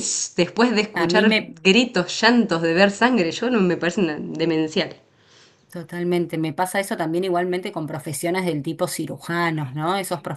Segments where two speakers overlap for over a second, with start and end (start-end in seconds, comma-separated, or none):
none